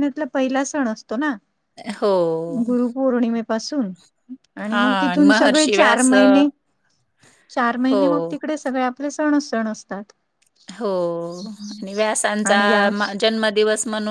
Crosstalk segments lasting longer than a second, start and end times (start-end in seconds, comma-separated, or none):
4.7-6.4